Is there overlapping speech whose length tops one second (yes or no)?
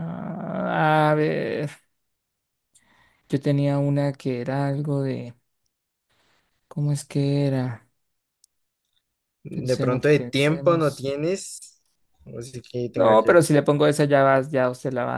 yes